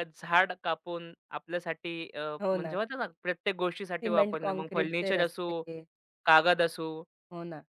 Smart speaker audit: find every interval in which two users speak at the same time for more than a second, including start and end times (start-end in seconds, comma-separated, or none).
4.0-5.6